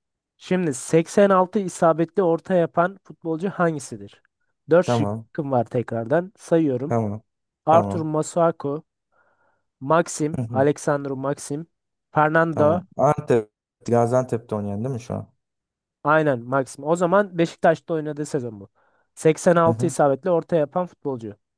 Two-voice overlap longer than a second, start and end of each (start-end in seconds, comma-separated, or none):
none